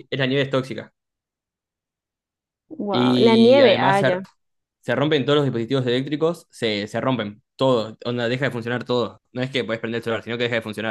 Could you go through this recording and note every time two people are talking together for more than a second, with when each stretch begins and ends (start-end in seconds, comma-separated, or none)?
2.9-4.2